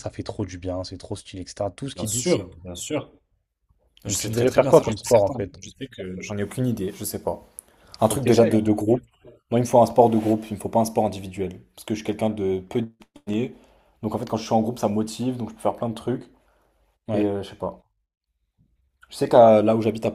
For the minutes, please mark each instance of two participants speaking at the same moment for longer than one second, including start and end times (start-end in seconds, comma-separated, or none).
4.1-5.6